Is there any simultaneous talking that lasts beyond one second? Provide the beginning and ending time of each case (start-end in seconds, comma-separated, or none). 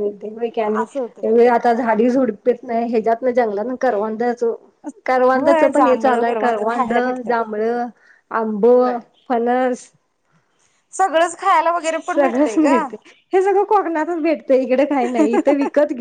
5.3-7.3